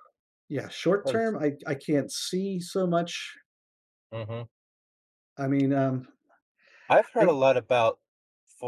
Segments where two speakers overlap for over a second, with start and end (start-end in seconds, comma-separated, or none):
none